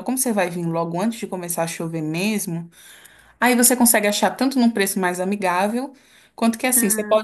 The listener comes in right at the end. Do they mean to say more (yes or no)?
no